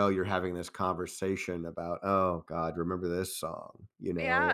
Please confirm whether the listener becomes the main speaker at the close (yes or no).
yes